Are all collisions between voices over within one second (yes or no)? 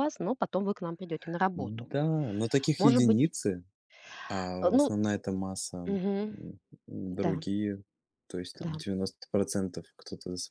yes